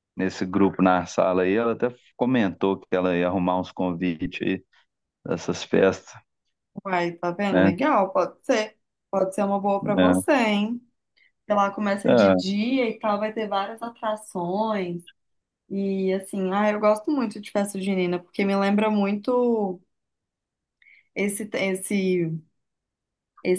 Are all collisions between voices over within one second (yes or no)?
yes